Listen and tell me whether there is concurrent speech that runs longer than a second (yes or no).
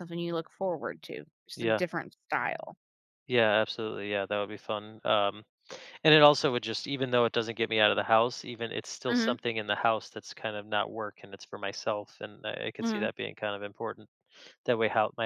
no